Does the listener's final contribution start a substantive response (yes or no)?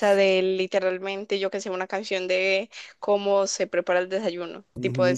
yes